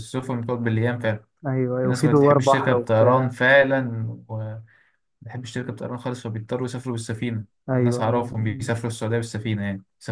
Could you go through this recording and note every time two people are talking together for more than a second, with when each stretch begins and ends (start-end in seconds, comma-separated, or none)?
1.8-3.4